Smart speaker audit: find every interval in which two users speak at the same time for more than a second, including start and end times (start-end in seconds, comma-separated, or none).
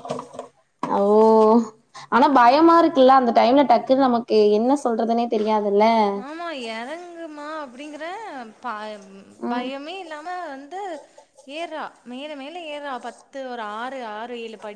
none